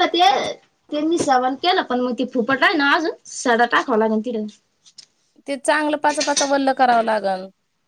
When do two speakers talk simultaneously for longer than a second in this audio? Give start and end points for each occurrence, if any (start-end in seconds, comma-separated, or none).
none